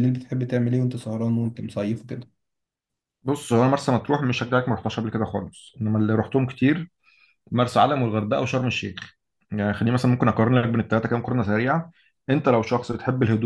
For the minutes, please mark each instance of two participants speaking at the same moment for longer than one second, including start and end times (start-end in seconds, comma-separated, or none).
none